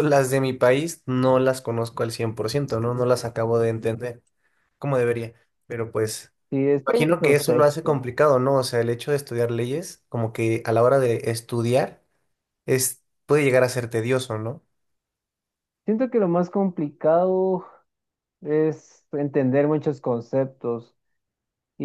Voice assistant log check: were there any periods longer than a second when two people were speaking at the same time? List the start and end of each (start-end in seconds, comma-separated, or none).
6.8-8.1